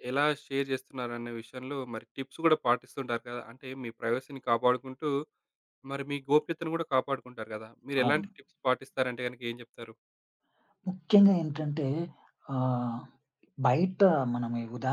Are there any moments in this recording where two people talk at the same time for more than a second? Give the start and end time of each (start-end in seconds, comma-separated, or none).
none